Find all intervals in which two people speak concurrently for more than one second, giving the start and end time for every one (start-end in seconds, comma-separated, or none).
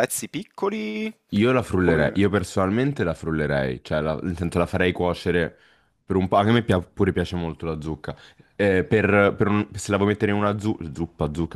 none